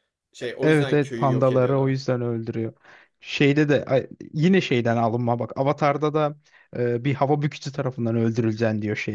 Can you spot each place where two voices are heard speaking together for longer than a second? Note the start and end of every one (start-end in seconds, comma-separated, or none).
0.6-1.9